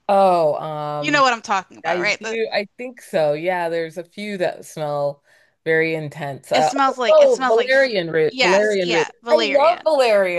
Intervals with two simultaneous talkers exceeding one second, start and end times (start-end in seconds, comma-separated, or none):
6.5-9.9